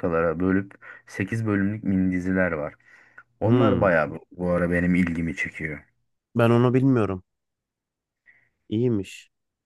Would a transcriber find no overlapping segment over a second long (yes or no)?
yes